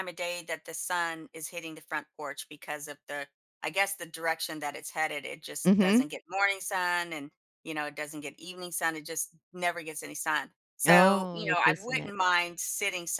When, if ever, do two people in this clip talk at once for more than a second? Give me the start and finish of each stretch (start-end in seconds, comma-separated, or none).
10.8-12.1